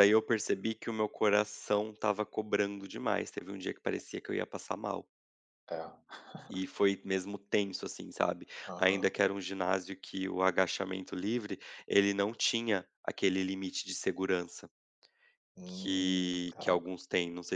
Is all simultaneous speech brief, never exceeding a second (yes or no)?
no